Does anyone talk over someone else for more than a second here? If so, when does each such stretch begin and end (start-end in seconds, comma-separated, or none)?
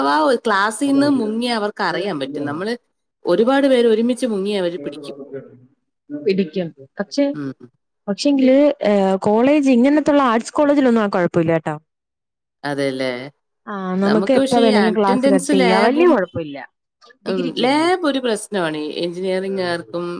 14.4-16.1